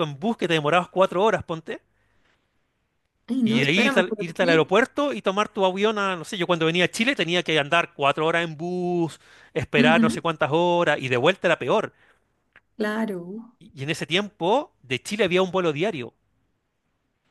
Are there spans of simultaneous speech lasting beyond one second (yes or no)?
yes